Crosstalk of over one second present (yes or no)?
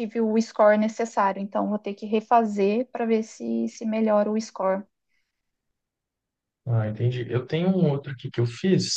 no